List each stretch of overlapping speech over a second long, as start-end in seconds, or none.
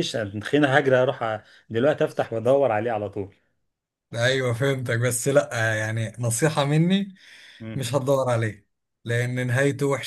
none